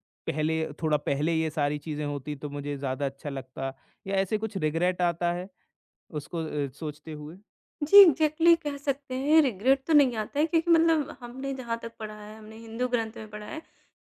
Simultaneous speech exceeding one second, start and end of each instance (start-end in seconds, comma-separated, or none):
none